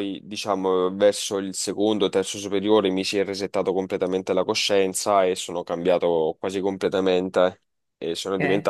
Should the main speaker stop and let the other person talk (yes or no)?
no